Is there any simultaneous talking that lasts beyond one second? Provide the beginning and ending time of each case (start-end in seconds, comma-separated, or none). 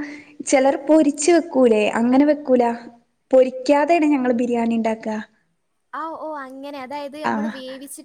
none